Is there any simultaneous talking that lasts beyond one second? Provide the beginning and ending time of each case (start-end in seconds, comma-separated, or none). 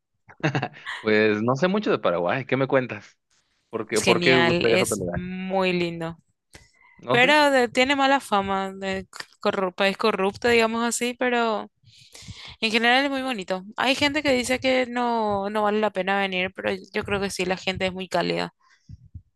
3.9-5.2